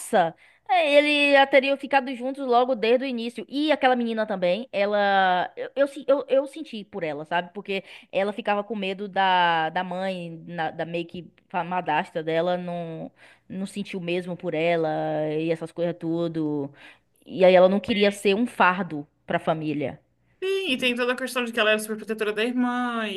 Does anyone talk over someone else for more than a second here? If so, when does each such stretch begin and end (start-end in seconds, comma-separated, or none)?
none